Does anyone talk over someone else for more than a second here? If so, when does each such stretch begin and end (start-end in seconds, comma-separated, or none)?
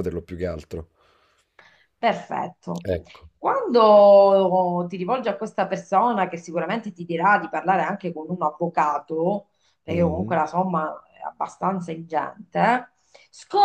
none